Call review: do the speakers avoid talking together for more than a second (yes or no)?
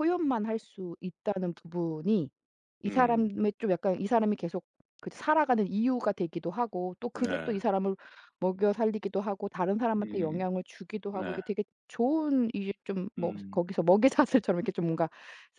yes